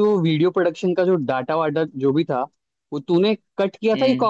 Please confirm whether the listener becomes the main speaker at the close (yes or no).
no